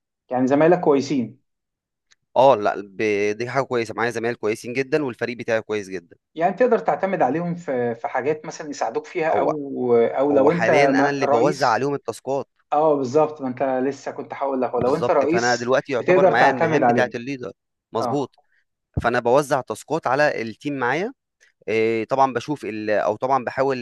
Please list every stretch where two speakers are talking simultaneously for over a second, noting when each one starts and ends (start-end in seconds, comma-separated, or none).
10.3-11.9, 14.8-17.1